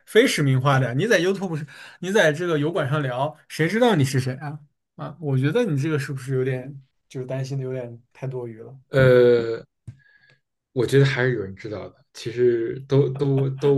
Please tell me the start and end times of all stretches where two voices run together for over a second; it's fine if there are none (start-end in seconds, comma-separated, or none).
none